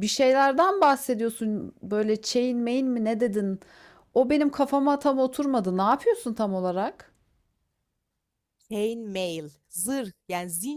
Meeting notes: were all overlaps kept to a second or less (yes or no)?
yes